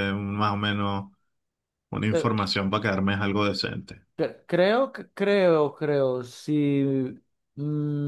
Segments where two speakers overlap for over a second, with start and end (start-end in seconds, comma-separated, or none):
none